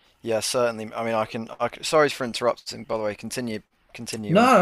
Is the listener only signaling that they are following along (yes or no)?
no